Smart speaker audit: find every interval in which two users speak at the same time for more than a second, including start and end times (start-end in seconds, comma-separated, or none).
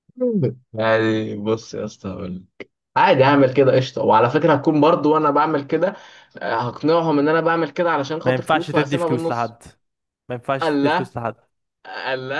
8.2-9.6